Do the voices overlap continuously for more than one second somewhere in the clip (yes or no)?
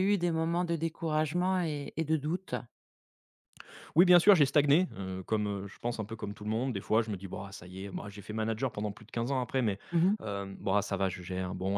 no